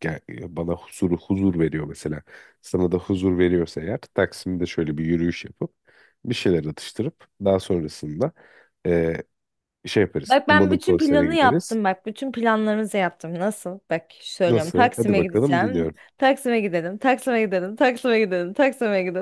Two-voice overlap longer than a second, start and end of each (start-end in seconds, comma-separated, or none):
10.2-11.8, 14.5-16.0